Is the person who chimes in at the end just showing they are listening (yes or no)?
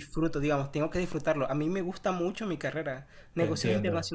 yes